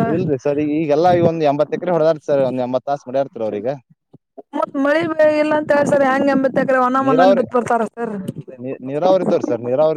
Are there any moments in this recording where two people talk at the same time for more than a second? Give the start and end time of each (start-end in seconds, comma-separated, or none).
none